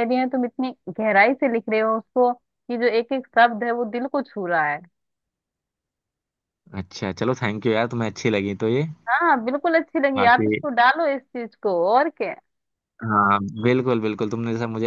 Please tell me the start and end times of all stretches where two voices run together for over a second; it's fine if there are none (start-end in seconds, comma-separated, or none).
none